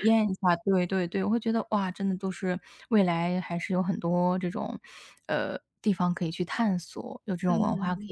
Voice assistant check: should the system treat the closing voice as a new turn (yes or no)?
yes